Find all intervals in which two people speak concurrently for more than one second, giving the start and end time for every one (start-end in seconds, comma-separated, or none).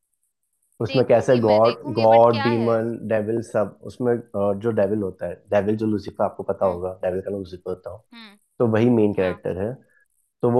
0.9-2.7